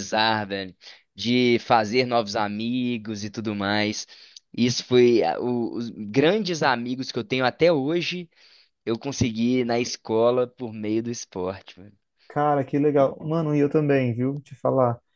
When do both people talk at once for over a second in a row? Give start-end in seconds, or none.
none